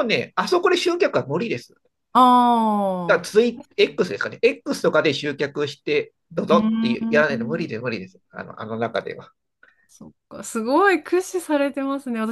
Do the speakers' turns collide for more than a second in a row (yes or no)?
yes